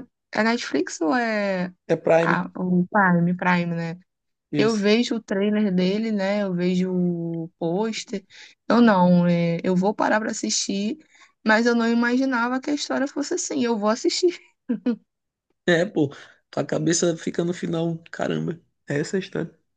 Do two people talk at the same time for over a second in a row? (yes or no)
no